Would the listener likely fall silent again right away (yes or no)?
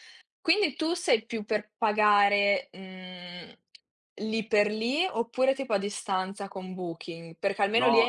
no